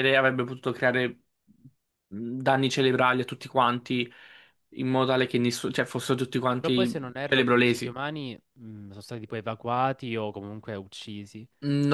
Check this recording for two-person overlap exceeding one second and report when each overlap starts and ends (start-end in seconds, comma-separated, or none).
6.6-8.0